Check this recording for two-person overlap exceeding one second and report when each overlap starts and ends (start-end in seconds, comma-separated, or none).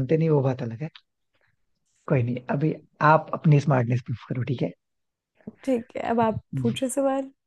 none